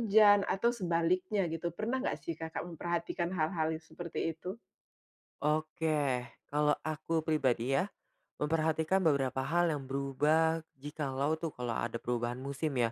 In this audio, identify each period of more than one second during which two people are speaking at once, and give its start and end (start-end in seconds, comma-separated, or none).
none